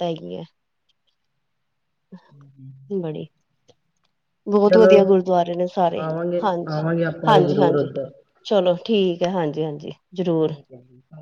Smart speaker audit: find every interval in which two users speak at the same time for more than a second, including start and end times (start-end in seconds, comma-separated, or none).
6.4-7.9